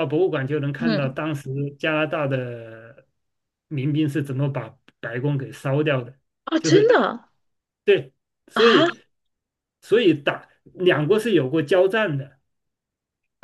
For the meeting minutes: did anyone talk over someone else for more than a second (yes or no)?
no